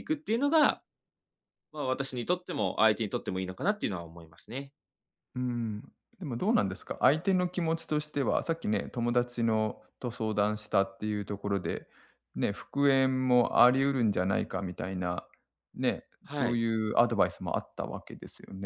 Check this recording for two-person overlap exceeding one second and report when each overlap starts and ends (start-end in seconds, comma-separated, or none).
none